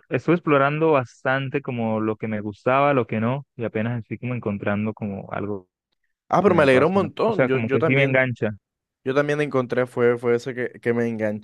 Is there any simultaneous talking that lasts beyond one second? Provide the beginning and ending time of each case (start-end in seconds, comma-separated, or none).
6.4-8.3